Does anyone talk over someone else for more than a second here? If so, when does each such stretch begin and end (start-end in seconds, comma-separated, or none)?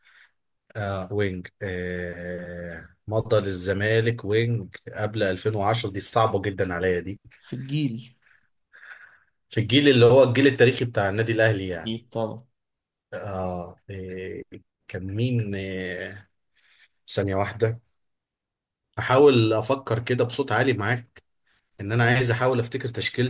none